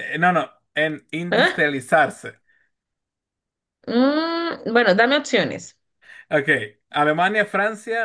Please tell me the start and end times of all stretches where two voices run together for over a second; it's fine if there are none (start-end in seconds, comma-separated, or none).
none